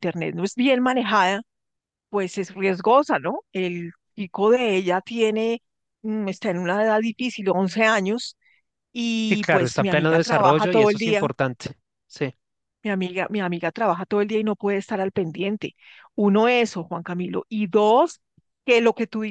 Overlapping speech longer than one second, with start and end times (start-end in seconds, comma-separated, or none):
9.3-11.2